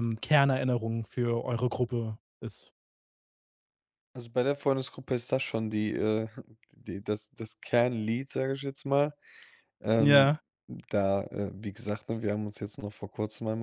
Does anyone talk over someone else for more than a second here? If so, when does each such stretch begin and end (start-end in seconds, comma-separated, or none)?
none